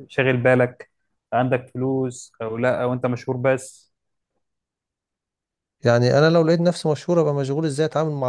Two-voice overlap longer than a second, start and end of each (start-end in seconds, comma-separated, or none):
none